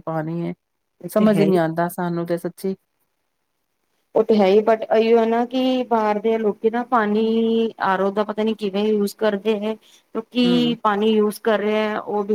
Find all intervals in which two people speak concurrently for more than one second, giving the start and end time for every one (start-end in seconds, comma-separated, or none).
none